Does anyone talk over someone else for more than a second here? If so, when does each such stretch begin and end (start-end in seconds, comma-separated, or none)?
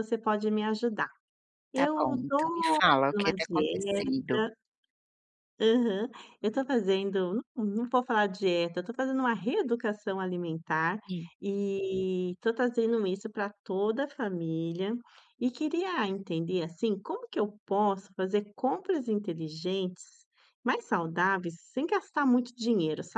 1.7-4.1